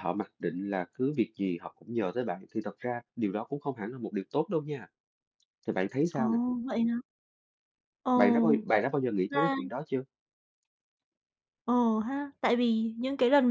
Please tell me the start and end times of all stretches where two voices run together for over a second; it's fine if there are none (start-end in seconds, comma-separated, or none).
none